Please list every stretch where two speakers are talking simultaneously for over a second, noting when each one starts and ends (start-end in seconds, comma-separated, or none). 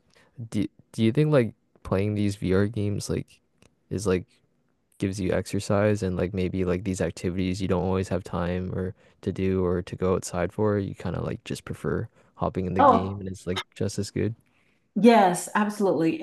none